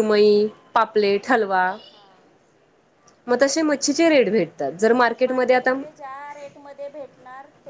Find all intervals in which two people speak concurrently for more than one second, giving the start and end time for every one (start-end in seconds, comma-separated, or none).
none